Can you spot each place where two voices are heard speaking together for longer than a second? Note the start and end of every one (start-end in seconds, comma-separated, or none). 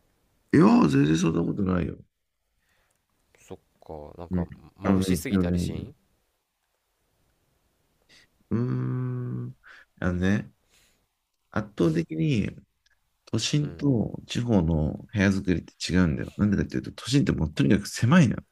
4.3-5.9